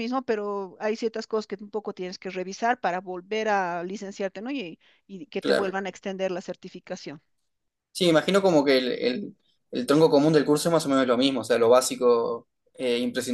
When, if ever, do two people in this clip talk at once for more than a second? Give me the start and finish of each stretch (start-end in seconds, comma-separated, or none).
none